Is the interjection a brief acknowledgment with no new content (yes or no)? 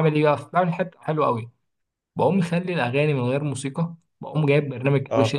yes